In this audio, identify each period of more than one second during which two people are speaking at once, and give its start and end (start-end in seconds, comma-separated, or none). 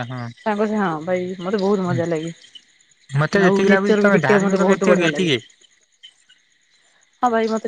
3.5-5.4